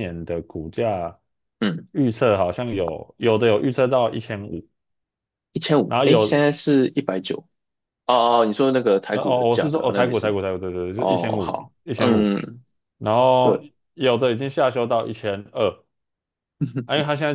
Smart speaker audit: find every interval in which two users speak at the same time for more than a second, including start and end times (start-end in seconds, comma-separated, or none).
9.1-10.3, 11.0-12.3